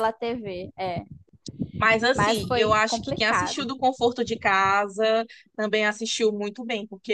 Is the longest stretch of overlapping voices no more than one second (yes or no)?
no